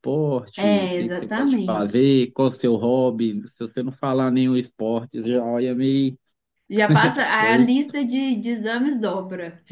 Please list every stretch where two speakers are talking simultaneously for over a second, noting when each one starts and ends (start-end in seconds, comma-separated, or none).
0.6-2.1